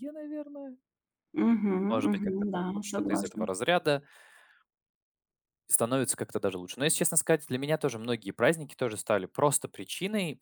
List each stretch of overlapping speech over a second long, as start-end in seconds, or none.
1.9-3.4